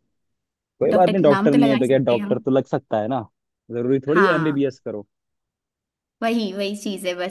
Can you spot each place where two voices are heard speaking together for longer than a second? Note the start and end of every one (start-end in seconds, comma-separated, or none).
0.9-2.4